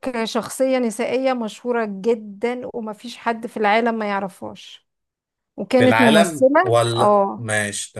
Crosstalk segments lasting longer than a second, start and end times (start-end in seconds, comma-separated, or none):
5.8-7.5